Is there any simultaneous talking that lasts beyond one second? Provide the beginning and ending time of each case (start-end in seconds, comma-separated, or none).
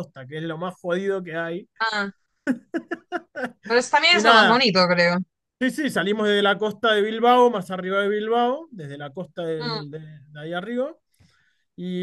none